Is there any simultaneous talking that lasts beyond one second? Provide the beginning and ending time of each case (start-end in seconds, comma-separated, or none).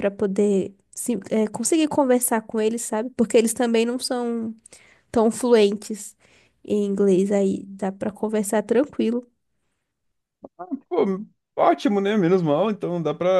none